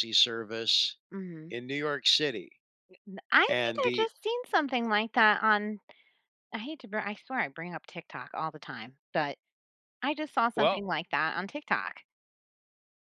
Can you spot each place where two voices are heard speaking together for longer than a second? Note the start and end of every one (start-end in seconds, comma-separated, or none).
none